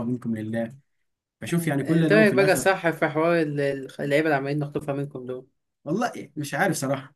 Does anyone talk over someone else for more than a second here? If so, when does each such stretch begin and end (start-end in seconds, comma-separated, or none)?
1.5-2.7